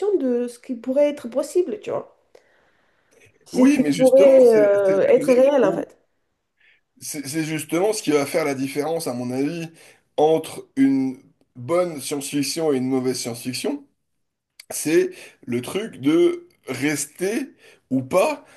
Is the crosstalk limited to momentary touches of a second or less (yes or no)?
no